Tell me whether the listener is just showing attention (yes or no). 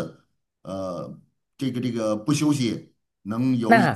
no